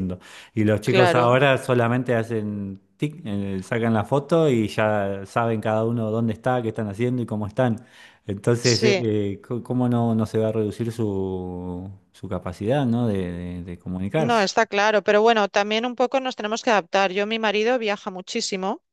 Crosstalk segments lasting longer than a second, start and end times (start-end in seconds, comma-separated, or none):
none